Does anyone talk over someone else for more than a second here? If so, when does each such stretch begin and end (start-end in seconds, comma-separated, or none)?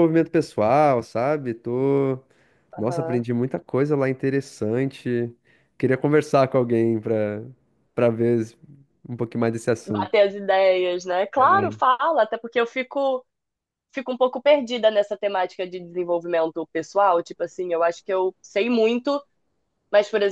none